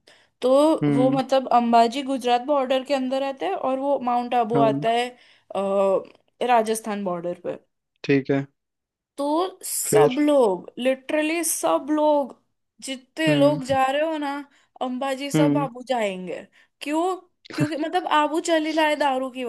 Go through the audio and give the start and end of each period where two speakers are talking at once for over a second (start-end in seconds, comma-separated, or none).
none